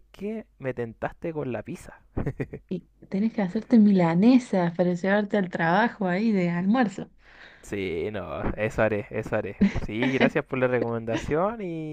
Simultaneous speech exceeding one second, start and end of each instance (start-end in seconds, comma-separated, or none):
none